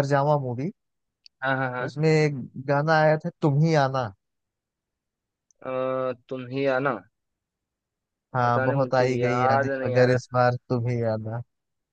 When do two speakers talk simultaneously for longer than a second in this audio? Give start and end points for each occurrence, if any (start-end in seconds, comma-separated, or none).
8.4-10.4